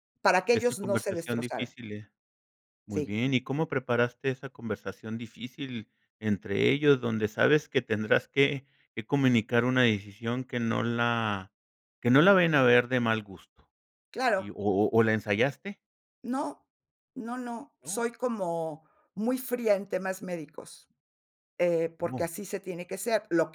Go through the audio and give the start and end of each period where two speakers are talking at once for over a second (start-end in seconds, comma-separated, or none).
0.5-1.7